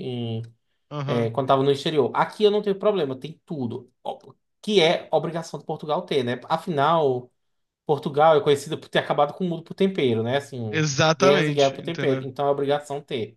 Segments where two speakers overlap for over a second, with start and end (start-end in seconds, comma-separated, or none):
10.7-12.2